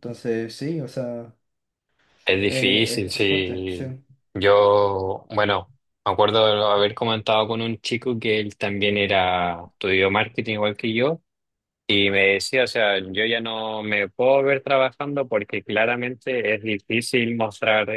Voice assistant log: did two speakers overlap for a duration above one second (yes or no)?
yes